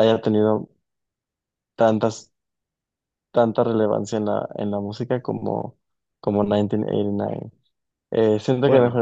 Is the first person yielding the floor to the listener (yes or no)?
no